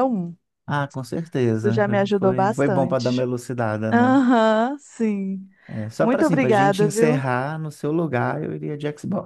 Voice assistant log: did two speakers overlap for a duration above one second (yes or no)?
yes